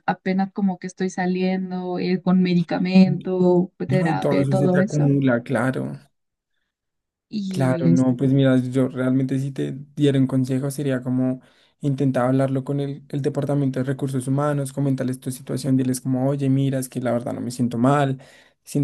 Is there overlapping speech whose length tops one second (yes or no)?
yes